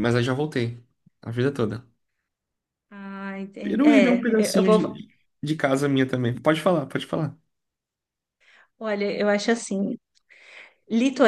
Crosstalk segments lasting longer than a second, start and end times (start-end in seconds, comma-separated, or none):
3.6-5.0